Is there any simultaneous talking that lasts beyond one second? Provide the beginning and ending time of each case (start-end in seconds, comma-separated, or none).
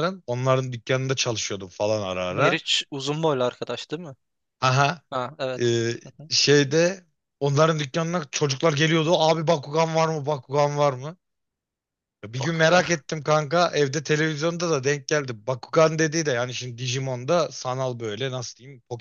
none